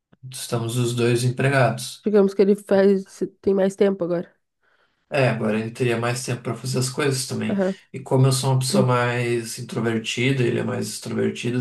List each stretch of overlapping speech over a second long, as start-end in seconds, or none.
none